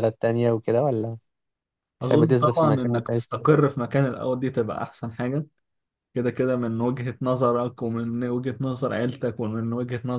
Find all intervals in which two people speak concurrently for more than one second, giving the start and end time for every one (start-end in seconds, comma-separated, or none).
2.0-3.2